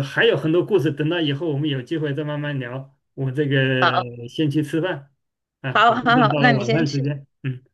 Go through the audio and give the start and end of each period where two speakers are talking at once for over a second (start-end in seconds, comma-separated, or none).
5.7-7.1